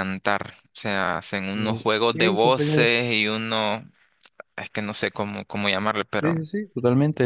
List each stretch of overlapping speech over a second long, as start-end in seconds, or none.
1.5-2.9